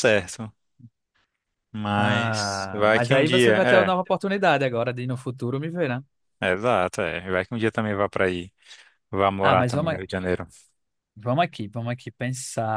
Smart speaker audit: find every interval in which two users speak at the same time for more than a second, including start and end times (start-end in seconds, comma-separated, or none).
2.0-3.9